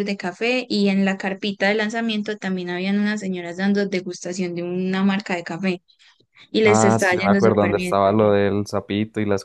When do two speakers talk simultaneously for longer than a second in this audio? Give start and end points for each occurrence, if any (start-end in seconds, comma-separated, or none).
6.7-8.0